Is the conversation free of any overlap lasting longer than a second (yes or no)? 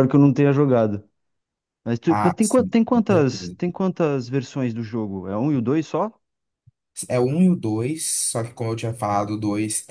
no